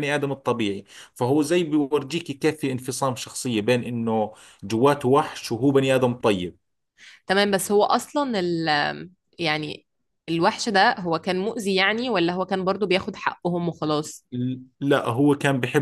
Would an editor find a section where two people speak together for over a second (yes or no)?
no